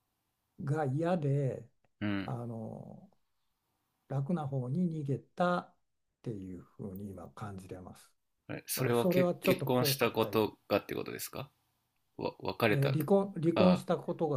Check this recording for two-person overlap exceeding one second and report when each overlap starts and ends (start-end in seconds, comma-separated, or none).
8.8-10.4